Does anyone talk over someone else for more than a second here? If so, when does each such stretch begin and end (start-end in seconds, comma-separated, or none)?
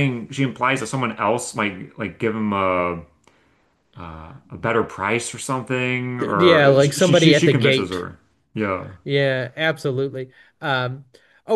6.2-8.1